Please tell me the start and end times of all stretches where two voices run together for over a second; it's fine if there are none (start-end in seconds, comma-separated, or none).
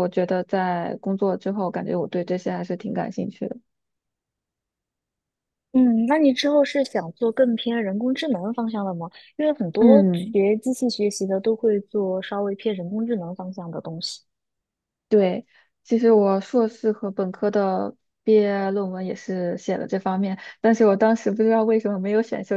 none